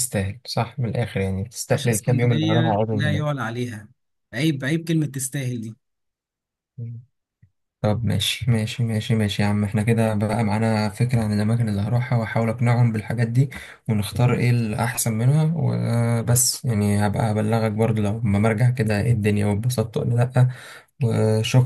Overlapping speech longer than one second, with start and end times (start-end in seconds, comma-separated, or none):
1.7-3.3